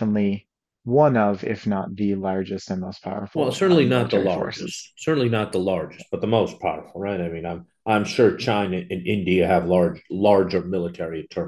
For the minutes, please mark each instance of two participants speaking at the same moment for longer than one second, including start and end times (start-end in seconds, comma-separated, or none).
3.3-4.9